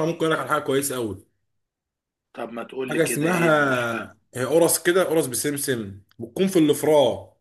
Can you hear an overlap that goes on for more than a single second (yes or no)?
yes